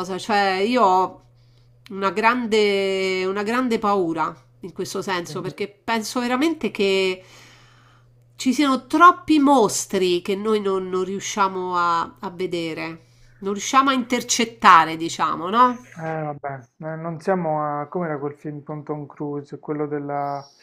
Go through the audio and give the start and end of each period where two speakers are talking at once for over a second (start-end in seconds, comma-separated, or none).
none